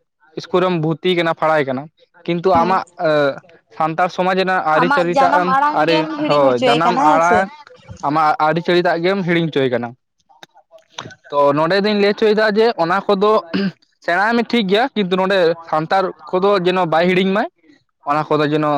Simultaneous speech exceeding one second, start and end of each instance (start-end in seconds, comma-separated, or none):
4.8-7.4